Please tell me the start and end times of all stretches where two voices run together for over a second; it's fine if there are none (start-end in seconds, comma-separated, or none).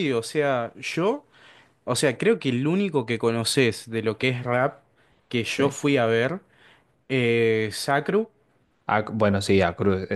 none